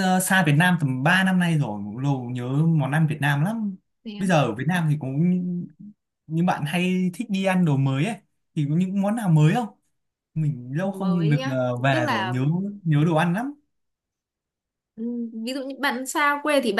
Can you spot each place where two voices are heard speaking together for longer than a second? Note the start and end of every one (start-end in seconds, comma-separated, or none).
10.8-12.3